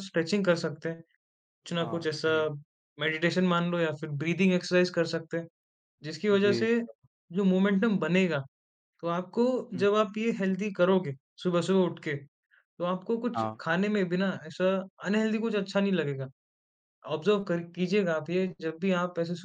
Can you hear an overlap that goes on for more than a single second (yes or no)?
no